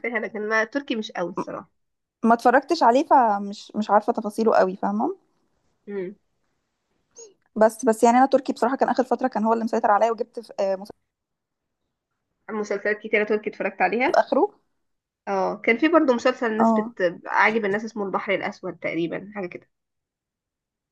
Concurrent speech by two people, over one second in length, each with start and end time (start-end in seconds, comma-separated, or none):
none